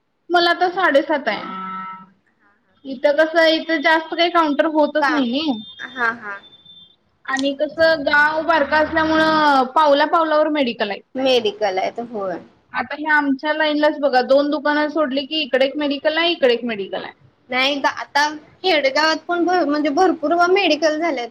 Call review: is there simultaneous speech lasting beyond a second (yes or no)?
no